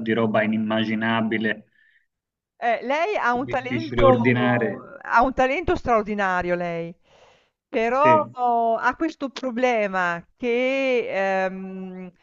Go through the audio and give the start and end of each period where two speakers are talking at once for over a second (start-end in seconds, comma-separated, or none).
3.5-4.8